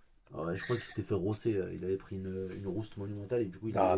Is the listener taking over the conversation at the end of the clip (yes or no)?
yes